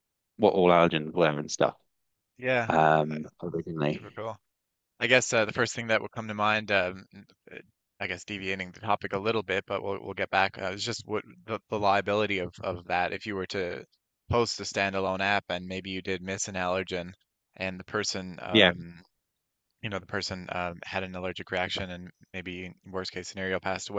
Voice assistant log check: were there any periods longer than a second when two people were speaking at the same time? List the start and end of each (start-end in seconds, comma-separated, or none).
none